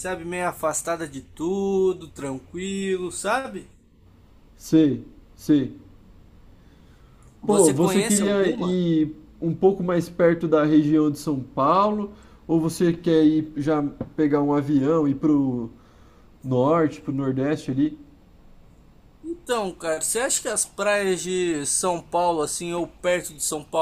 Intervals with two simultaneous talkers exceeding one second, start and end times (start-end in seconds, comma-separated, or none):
7.5-8.8